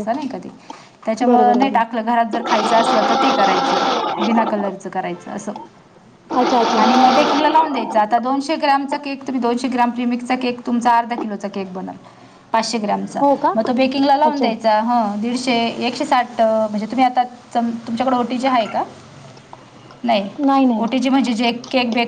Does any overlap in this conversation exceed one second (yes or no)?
no